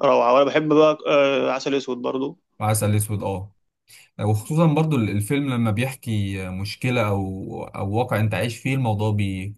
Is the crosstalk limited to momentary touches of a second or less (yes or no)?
yes